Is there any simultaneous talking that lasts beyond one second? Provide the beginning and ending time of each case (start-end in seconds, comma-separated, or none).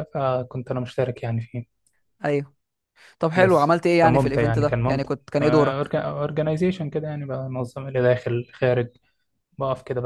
3.4-5.1